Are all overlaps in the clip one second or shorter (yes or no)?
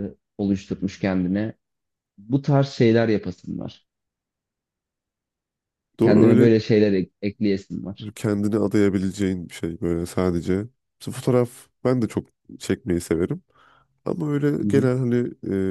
yes